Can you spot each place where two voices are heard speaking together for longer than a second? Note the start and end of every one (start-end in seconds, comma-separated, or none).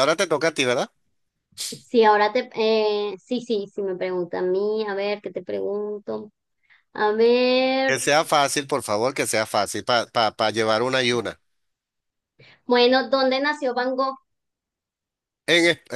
none